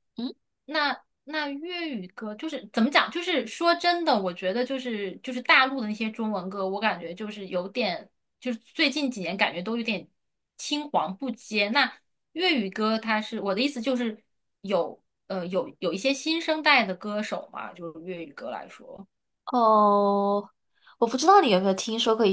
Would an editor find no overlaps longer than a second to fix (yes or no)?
yes